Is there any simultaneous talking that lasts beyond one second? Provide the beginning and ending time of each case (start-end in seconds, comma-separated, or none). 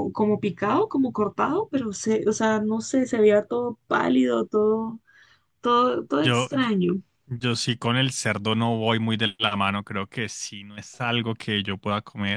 none